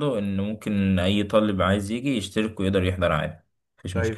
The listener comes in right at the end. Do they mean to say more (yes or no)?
yes